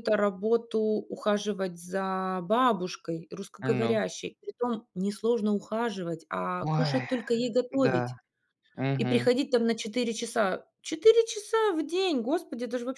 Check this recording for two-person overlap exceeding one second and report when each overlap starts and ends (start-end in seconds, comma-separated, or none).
none